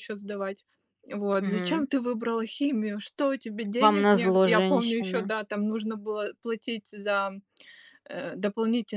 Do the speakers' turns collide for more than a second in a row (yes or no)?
yes